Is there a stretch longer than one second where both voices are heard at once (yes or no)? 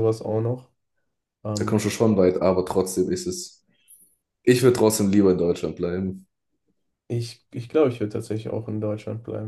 no